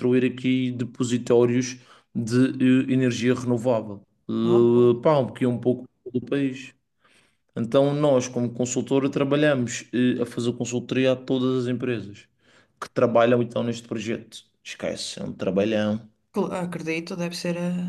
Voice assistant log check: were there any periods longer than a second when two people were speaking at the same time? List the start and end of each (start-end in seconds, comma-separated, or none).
none